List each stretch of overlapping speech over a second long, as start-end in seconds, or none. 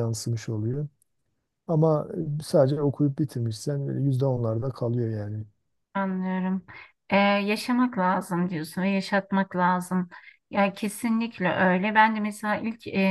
none